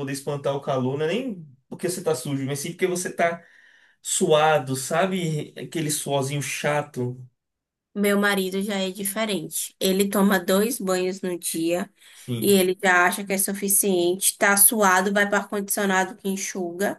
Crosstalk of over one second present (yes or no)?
no